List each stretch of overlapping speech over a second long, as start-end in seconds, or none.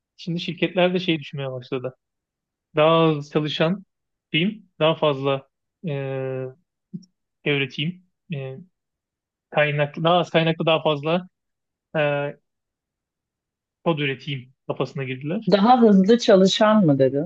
none